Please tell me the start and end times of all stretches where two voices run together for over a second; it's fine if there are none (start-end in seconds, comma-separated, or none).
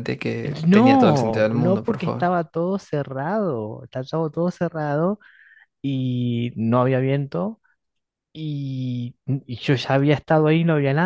0.7-2.3